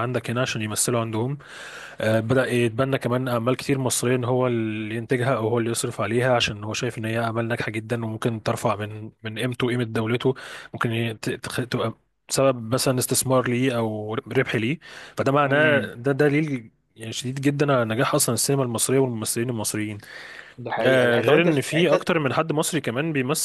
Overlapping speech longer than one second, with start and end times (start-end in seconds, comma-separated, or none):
20.8-22.1